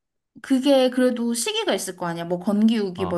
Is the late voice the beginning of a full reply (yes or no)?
yes